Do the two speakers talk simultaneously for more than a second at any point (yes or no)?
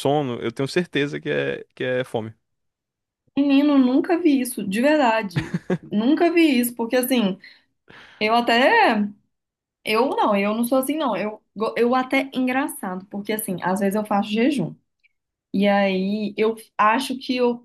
no